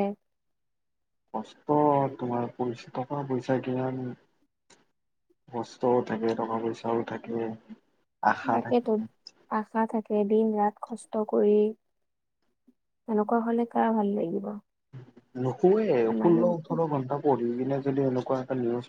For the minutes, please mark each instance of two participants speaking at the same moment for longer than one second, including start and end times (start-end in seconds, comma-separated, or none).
none